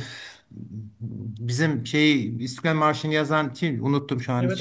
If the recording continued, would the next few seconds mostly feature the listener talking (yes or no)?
no